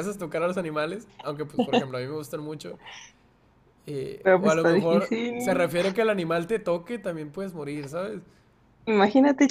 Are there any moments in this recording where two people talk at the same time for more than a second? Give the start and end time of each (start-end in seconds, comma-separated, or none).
4.2-5.7